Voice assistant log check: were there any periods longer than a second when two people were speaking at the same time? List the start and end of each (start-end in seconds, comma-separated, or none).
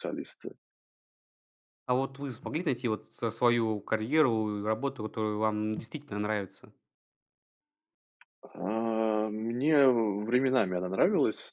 none